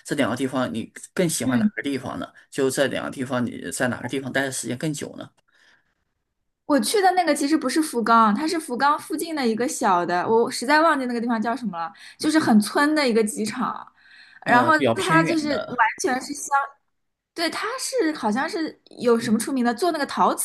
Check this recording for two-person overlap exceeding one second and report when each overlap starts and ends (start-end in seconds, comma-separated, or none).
14.4-15.8